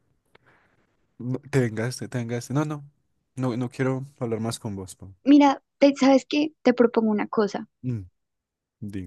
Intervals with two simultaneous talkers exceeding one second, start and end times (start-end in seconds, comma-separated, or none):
none